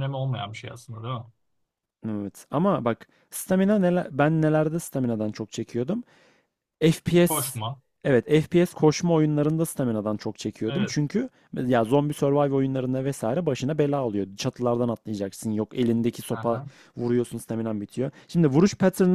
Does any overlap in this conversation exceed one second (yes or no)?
no